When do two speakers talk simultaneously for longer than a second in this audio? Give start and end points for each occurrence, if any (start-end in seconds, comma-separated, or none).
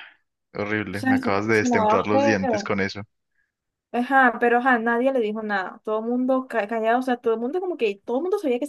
0.9-2.7